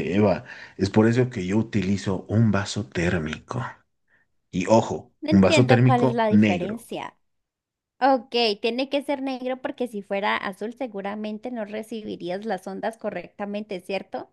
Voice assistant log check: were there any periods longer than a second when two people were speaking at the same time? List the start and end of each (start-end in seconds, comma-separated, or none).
5.2-6.9